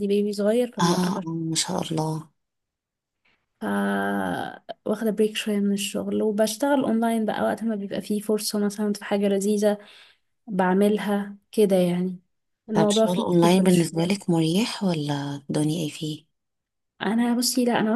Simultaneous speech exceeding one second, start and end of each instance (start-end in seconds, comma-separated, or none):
12.7-14.2